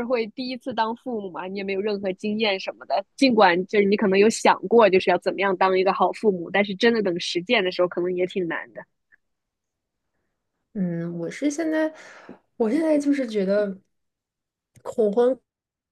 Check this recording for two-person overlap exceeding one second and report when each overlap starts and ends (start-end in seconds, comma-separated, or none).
none